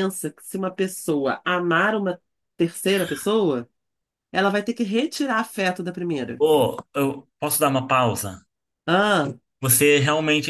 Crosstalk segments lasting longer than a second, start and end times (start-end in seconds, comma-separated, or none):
none